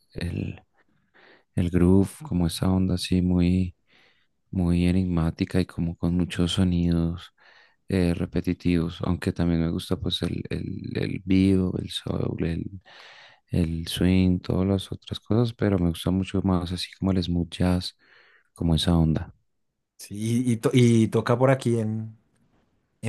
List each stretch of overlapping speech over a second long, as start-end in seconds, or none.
none